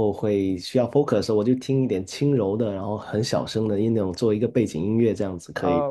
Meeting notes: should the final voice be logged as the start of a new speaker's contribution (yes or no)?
yes